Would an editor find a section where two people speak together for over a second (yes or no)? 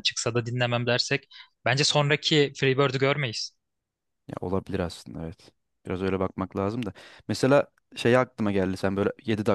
no